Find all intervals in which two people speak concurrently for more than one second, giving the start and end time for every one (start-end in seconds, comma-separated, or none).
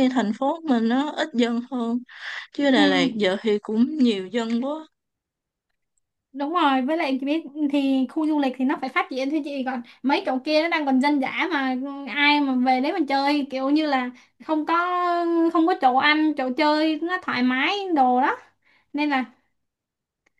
none